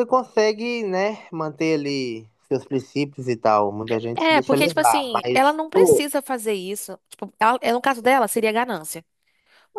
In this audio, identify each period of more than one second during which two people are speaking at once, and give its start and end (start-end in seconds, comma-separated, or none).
4.2-6.0